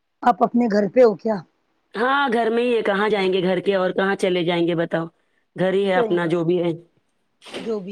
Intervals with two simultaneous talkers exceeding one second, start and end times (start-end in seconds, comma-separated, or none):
none